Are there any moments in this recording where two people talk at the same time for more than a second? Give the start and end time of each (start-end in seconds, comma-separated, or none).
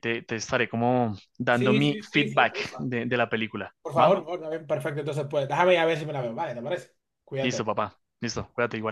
1.5-2.9